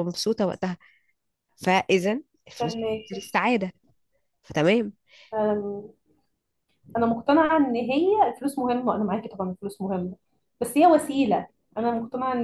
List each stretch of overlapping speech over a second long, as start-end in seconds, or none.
none